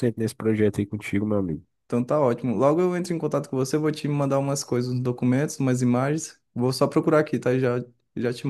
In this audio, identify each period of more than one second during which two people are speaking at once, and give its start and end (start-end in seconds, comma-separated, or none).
none